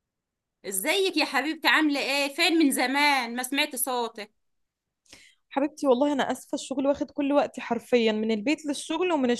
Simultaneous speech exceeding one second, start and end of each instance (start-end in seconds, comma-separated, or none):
none